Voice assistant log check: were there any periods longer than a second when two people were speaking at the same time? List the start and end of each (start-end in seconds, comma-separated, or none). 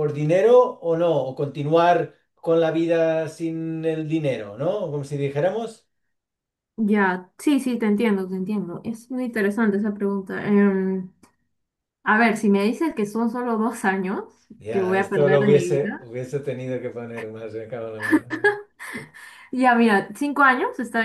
14.7-16.1